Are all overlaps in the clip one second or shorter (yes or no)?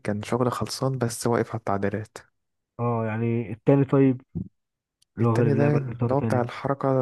no